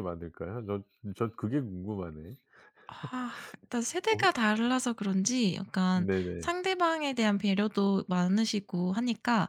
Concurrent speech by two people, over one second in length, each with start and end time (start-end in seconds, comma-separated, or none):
none